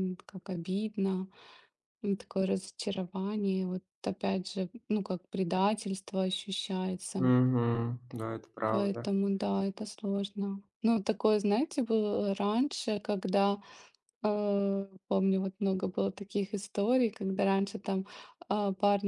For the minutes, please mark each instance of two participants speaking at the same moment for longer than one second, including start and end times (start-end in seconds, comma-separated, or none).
none